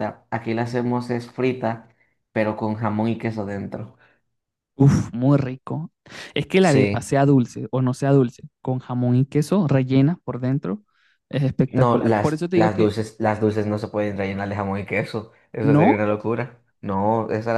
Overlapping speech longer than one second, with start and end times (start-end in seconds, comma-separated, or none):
11.6-12.9